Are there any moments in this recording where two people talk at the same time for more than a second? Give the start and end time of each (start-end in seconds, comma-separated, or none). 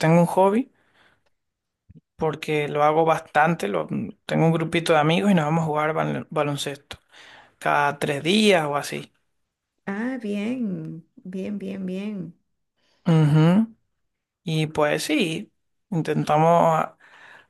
none